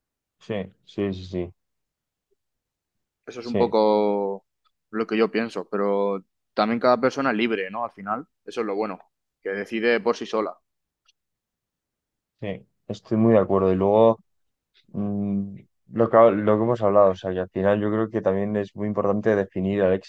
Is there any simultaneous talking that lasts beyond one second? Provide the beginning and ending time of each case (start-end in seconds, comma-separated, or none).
none